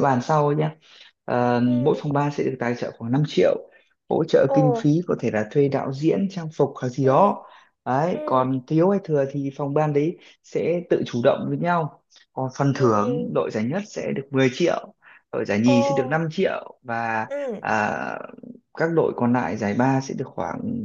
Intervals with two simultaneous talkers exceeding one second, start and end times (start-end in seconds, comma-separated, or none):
none